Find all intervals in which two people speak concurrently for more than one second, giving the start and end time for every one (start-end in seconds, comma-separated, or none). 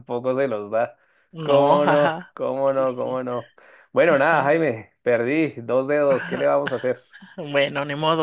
1.4-3.2